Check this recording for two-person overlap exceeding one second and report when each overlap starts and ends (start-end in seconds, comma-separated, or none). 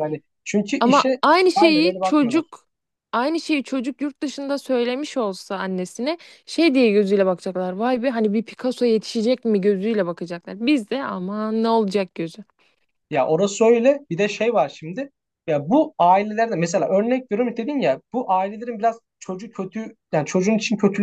0.8-2.5